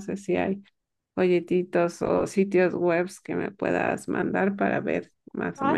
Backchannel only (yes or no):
no